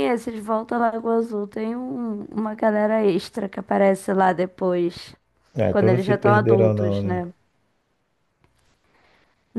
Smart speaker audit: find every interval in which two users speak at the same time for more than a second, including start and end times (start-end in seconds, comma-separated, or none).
5.7-7.3